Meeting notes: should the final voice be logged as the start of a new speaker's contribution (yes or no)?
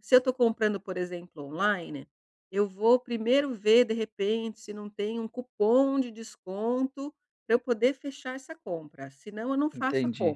yes